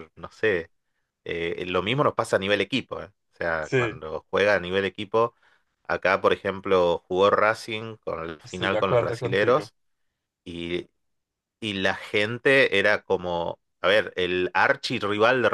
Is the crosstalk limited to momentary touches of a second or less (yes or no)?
no